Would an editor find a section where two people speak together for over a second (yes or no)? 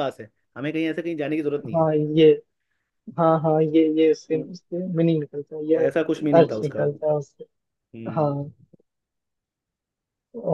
no